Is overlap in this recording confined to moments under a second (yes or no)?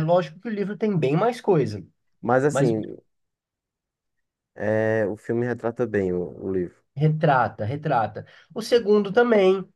yes